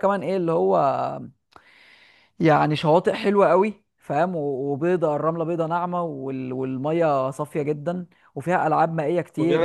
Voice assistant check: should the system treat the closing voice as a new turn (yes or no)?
yes